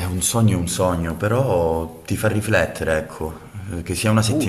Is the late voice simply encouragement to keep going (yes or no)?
yes